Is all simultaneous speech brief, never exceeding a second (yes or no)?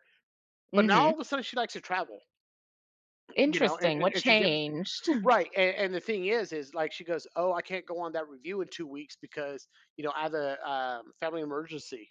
no